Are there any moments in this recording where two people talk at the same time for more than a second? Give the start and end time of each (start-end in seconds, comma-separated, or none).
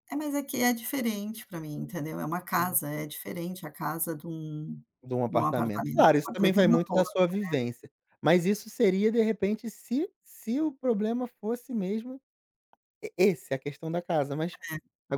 5.3-7.1